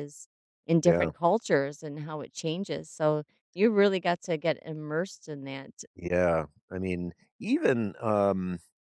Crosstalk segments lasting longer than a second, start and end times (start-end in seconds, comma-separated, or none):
none